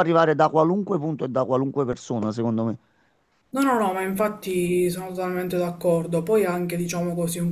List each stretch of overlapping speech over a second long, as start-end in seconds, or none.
none